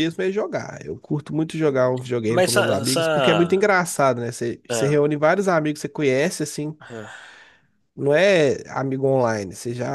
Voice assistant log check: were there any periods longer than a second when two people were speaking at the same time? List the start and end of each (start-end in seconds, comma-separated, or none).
2.3-3.7